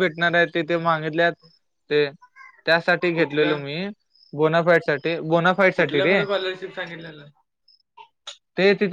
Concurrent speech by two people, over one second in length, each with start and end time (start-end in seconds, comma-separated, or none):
none